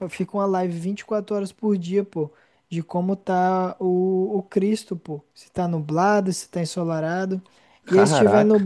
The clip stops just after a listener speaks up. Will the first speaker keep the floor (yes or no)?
yes